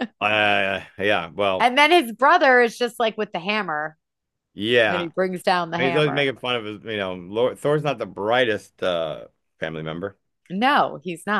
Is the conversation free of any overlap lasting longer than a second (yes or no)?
yes